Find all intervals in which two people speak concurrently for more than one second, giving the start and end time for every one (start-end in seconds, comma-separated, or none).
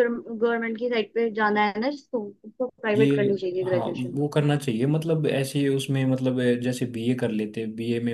none